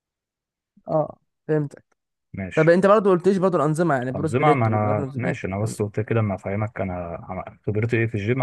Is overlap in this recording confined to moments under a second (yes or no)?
no